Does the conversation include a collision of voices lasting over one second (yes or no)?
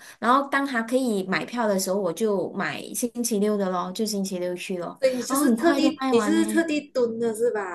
yes